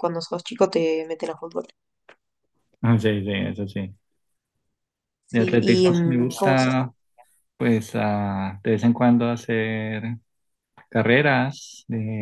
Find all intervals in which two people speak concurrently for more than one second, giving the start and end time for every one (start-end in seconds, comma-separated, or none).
5.3-6.7